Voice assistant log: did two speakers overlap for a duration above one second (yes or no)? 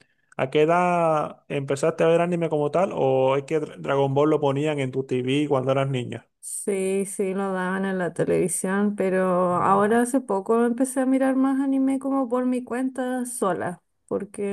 no